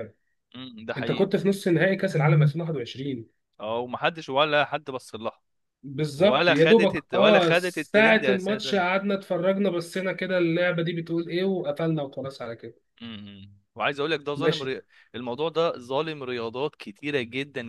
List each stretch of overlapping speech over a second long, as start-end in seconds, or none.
6.2-8.8